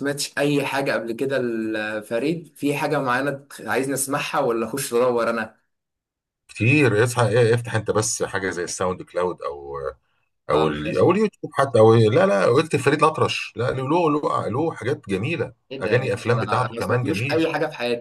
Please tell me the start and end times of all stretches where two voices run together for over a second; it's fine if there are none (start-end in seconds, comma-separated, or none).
15.7-17.4